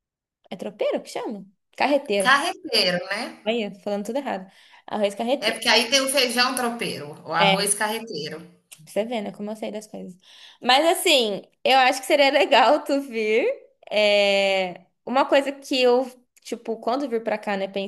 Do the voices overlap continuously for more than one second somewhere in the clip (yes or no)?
no